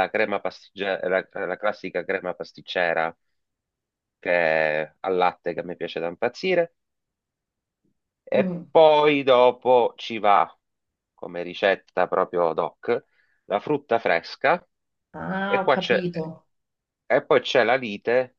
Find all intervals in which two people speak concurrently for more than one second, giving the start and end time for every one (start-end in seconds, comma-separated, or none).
none